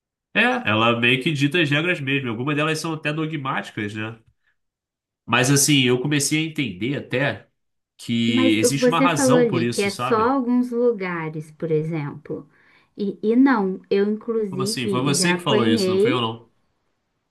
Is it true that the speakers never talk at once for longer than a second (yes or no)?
no